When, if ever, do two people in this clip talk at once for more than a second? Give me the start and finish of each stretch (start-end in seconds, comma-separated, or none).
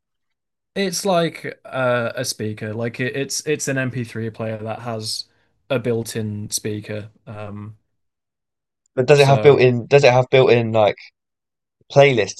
none